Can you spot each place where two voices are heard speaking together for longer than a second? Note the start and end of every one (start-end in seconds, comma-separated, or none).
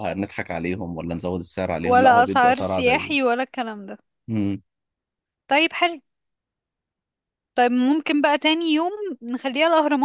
1.8-3.3